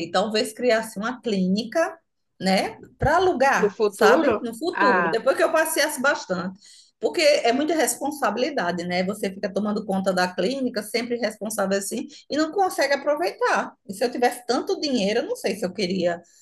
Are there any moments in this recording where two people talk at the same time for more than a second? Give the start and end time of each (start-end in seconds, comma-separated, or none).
3.6-5.2